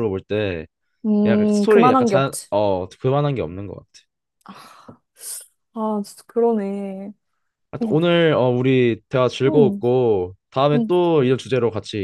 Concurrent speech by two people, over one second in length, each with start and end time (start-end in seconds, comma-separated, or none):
1.2-2.5